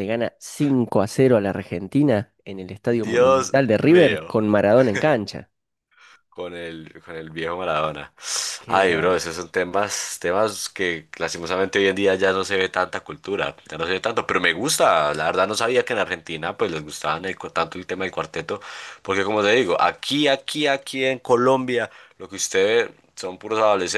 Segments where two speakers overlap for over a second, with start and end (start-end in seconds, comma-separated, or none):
3.0-4.4